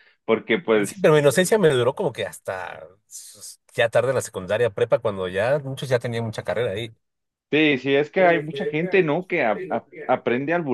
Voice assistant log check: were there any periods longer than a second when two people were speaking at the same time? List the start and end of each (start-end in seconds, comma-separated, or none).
none